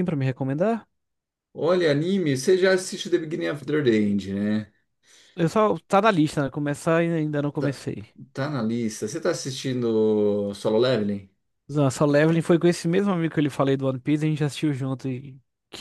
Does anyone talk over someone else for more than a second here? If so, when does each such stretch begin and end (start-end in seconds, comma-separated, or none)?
none